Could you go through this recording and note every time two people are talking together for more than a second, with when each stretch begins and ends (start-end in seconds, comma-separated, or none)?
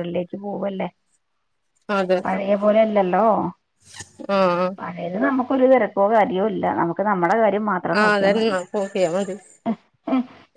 none